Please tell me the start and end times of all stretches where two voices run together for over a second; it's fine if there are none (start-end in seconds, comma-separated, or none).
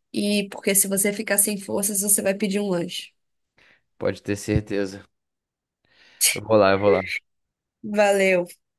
none